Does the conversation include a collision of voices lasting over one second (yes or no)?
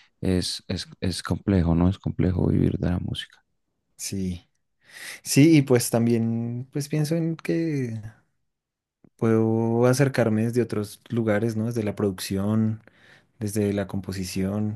no